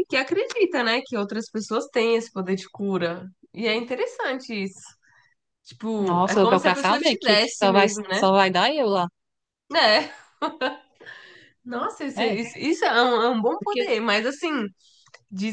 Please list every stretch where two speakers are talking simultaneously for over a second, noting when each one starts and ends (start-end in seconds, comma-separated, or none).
6.0-8.2